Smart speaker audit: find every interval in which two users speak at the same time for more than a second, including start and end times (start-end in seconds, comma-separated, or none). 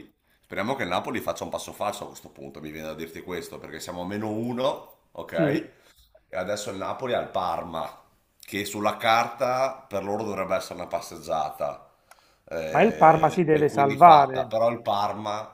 12.7-14.5